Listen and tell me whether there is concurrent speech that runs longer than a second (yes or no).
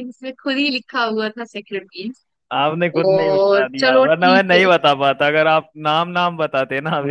yes